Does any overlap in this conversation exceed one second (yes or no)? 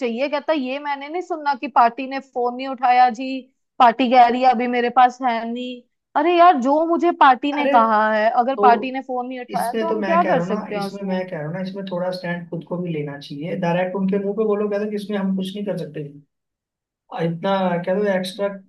yes